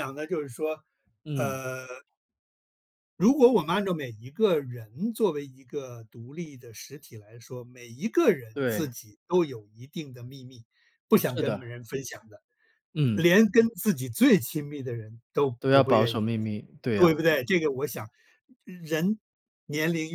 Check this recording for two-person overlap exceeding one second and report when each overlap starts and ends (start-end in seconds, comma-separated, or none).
none